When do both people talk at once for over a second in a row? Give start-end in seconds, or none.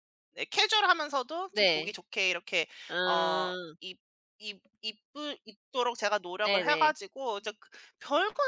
none